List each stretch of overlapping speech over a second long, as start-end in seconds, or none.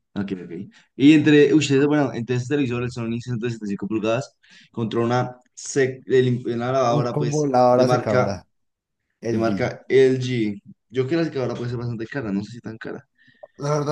6.9-8.4